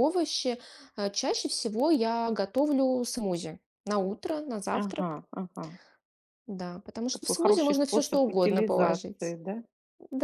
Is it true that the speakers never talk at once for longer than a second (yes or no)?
no